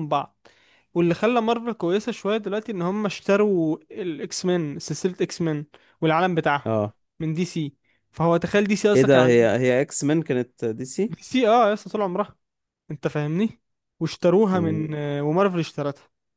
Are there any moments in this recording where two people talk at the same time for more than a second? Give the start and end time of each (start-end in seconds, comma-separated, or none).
none